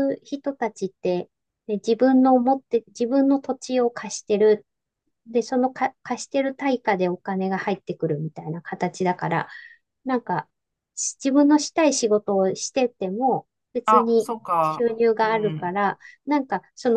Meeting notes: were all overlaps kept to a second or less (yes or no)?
no